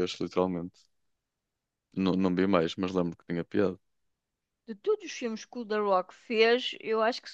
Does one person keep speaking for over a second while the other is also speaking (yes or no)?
no